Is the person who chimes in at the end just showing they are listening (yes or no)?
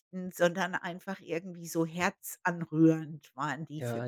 no